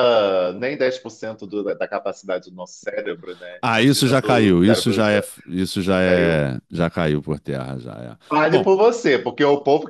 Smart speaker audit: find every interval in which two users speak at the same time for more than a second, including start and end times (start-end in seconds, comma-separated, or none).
3.6-5.3